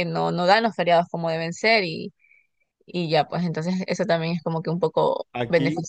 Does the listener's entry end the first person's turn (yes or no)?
yes